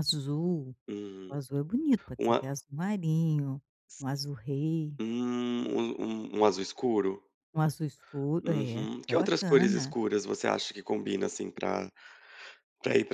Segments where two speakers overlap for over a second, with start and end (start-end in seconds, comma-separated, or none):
8.4-9.9